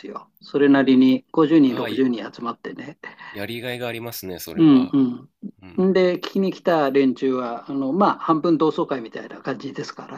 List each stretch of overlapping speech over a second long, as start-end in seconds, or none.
none